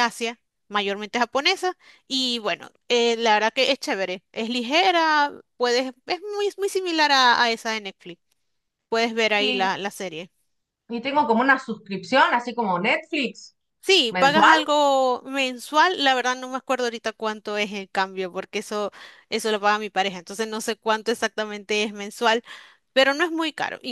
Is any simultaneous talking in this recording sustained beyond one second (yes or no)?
no